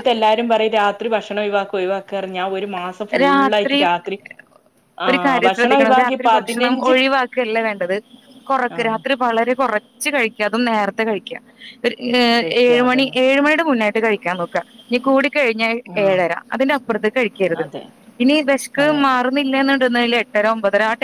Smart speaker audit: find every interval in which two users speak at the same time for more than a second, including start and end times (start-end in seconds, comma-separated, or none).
5.1-6.9